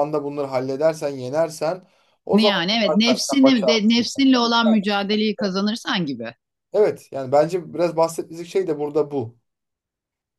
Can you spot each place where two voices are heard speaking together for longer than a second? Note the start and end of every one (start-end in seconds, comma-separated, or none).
2.3-4.1